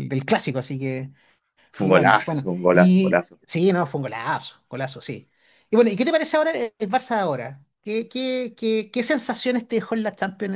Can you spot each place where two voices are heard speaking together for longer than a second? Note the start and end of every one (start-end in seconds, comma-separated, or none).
1.7-3.4